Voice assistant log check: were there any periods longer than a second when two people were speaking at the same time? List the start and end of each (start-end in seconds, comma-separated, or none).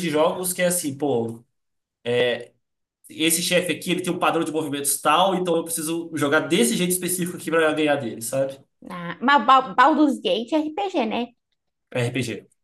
none